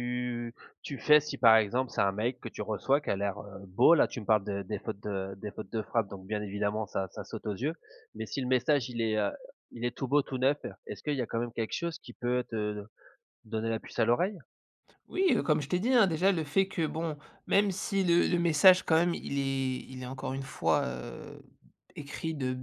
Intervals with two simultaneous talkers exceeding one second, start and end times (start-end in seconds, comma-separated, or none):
none